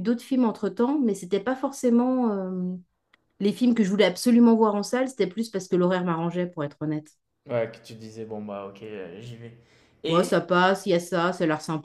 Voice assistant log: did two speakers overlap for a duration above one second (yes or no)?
no